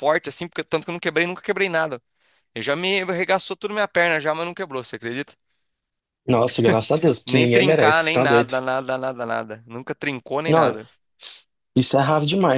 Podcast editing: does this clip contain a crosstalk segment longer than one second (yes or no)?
yes